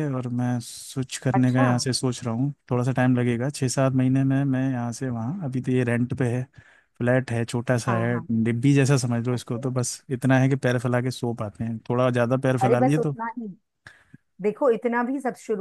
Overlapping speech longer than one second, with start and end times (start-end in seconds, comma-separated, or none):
none